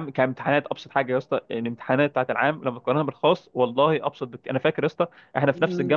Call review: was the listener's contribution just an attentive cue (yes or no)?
yes